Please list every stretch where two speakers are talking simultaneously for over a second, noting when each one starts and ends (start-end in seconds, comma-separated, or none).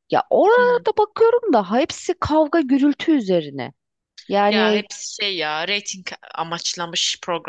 none